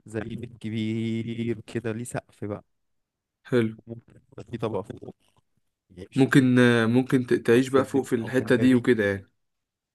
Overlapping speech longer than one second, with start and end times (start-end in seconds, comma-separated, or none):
7.5-8.8